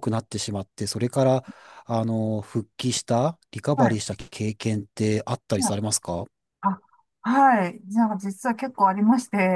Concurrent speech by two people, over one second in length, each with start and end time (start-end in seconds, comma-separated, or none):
none